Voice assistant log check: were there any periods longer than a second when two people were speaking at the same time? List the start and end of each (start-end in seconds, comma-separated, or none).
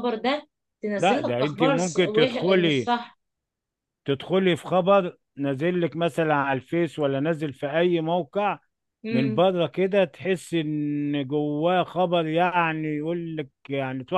1.0-2.9